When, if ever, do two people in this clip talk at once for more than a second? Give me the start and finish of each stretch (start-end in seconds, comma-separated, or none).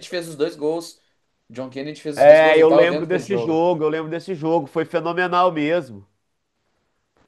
2.2-3.7